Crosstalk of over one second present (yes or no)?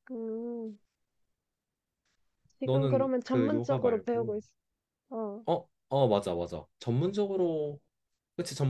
yes